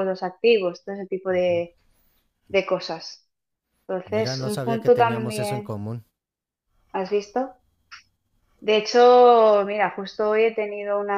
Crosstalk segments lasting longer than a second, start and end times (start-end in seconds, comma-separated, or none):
4.0-5.8